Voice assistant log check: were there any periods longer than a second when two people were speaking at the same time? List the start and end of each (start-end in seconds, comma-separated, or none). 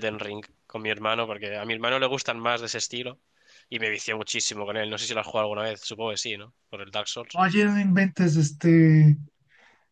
none